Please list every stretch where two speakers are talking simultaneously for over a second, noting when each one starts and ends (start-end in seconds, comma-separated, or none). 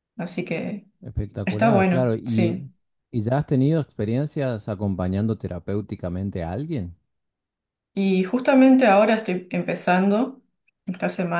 1.4-2.7